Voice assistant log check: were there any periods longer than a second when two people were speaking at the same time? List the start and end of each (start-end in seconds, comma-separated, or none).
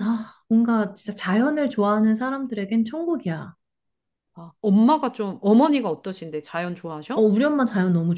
none